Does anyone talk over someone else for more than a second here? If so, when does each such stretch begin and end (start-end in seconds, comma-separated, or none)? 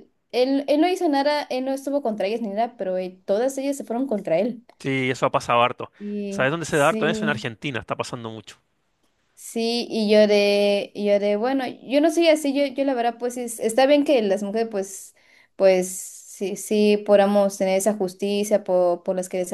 6.3-7.5